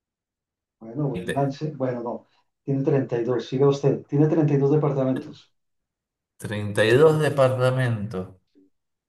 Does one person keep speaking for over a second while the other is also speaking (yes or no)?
no